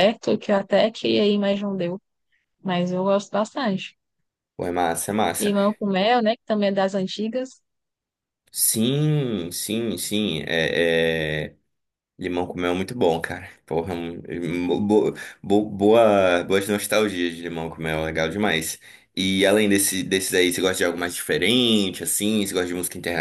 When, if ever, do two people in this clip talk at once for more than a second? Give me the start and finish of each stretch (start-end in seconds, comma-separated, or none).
none